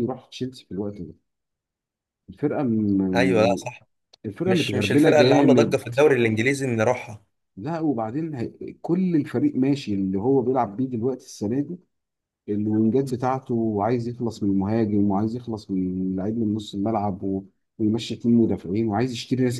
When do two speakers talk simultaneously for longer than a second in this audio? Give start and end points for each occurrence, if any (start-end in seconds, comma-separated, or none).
4.5-5.9